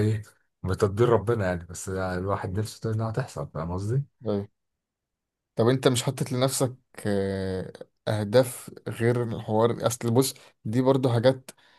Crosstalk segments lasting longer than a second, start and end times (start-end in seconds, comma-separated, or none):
none